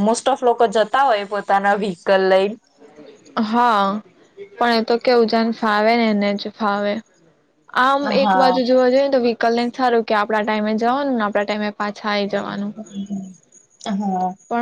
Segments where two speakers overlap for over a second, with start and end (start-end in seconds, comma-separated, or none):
none